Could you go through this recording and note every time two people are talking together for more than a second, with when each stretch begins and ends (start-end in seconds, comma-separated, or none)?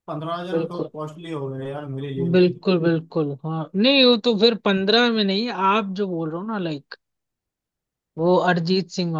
none